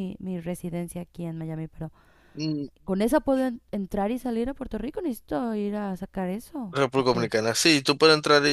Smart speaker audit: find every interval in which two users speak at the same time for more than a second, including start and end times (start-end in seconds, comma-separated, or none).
none